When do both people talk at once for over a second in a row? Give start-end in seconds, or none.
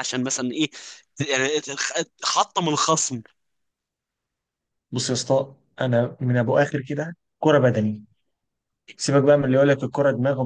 none